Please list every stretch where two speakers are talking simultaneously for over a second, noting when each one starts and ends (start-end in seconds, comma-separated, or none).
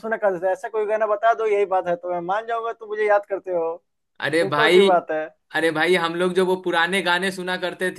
none